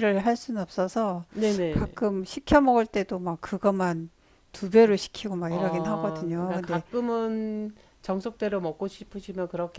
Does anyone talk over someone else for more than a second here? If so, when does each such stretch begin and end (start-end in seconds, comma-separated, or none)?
5.5-6.8